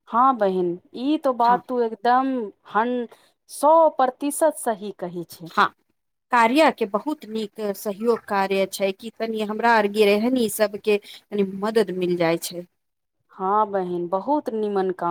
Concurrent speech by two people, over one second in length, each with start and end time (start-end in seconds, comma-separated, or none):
none